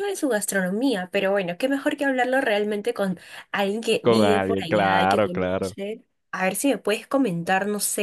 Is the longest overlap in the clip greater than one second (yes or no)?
yes